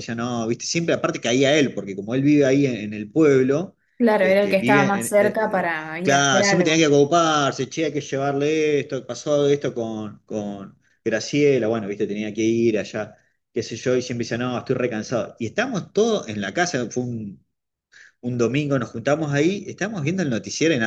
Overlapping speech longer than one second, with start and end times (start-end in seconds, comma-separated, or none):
4.2-6.8